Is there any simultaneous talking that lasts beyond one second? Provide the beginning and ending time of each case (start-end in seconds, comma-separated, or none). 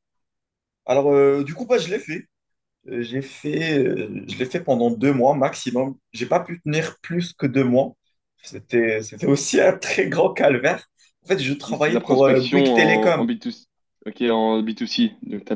11.7-13.3